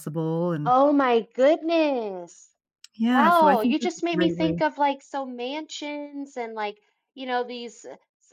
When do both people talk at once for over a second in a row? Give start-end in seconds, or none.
3.1-4.6